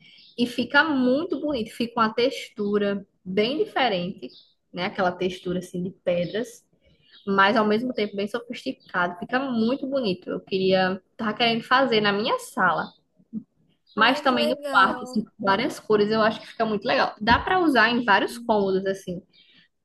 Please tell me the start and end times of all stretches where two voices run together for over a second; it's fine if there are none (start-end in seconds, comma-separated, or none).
14.0-15.2